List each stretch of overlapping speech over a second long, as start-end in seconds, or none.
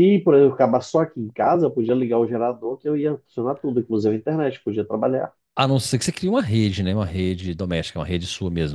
none